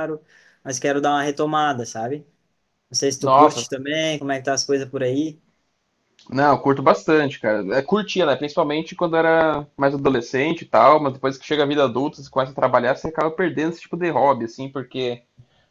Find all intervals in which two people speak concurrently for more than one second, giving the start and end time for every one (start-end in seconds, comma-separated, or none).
none